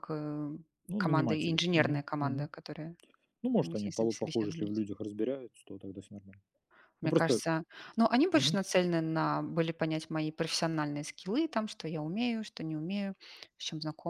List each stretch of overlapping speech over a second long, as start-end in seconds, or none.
1.0-2.5, 3.6-4.8